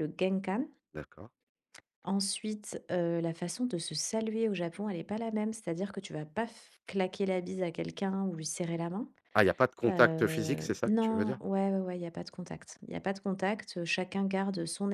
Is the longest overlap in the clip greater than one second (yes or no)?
yes